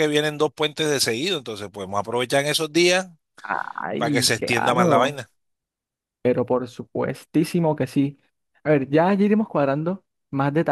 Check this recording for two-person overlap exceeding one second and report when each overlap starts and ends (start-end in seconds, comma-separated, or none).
4.0-5.2